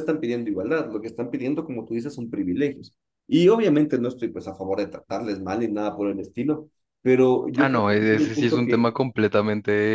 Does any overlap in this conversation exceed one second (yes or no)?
yes